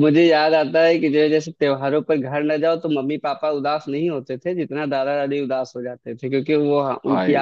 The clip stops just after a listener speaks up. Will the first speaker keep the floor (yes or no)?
yes